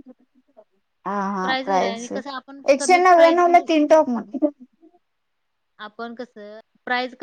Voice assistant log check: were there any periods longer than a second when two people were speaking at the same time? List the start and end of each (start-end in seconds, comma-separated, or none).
1.4-3.7